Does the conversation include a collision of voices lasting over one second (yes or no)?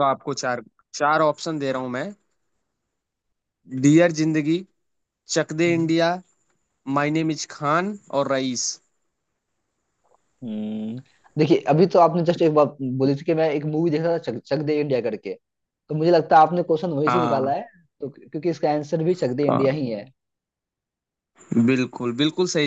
no